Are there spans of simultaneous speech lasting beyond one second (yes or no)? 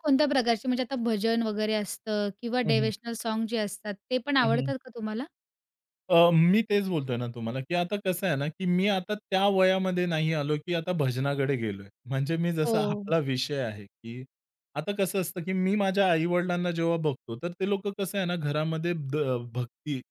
no